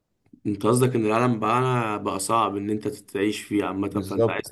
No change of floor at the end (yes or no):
no